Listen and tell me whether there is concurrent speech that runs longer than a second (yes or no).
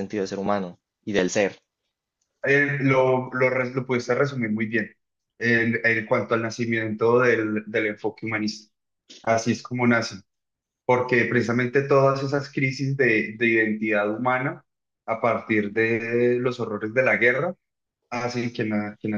no